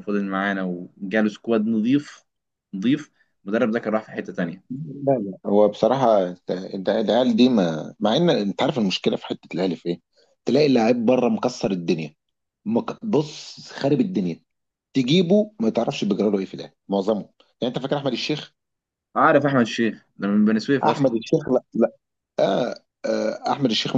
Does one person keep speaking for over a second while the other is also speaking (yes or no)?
no